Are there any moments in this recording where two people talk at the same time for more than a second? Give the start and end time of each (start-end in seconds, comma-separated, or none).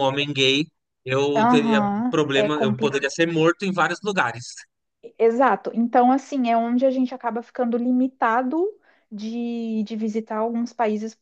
1.4-3.1